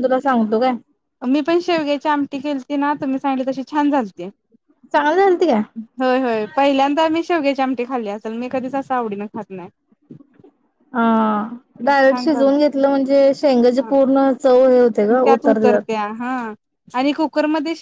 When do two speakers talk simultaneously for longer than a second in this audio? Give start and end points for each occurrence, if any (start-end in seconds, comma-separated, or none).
none